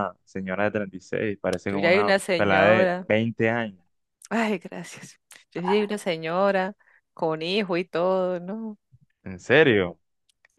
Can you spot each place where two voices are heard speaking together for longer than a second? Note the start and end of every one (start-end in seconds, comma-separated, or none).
1.7-3.1